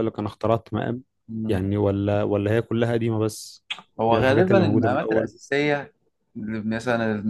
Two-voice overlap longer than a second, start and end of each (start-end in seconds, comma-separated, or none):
4.1-5.3